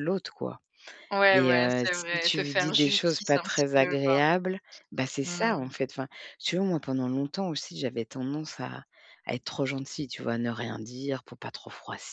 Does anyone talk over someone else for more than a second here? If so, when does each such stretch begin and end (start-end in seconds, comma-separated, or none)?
1.3-4.1